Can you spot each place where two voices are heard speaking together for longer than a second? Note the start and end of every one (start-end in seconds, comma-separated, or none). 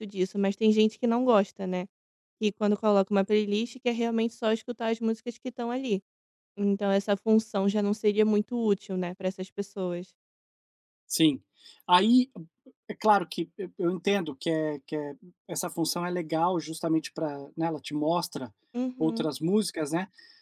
none